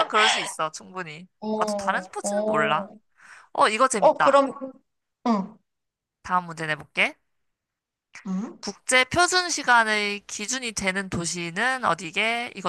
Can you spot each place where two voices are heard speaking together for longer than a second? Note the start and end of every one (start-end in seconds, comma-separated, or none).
1.4-2.9